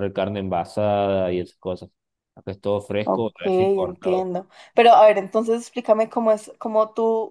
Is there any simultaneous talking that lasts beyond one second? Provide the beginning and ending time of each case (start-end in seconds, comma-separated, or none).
3.0-4.3